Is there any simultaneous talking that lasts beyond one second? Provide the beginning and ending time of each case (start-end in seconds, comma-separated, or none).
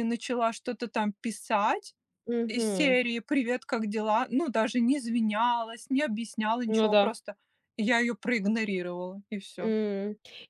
none